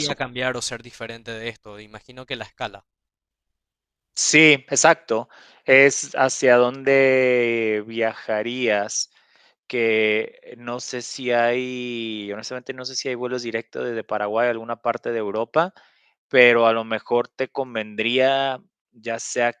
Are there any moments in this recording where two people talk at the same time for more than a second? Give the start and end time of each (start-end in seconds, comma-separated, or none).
none